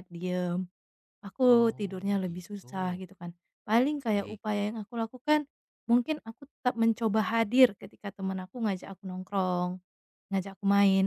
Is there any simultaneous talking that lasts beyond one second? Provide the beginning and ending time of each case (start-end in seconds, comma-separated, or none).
1.4-3.0